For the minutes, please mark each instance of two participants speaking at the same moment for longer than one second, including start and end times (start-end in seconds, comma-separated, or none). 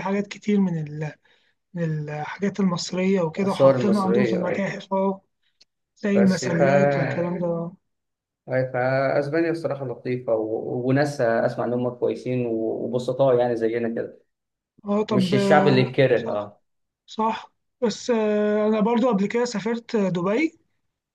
3.4-4.7, 15.1-16.5